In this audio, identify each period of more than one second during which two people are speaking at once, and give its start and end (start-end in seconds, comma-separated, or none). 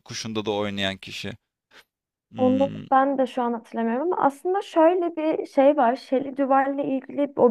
none